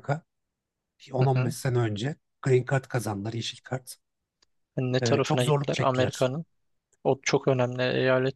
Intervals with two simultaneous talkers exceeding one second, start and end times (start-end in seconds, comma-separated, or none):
5.0-6.3